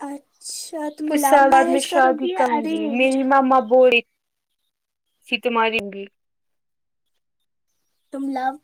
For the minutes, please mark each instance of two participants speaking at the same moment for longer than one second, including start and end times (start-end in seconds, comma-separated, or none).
1.1-3.2